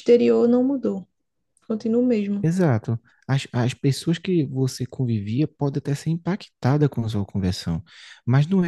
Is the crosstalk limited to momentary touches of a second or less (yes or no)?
yes